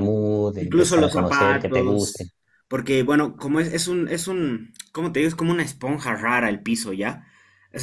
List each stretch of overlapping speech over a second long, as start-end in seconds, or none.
0.6-2.3